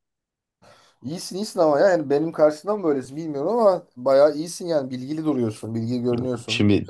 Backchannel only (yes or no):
no